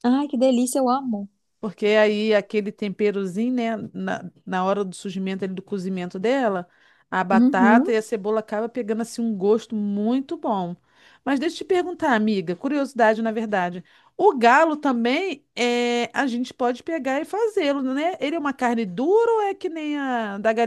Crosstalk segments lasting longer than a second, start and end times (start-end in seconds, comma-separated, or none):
none